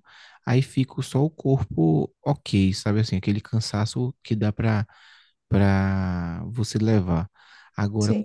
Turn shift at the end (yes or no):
no